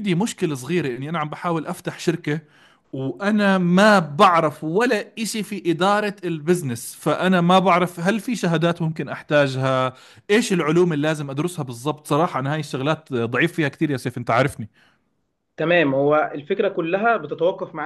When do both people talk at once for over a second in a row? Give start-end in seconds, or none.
none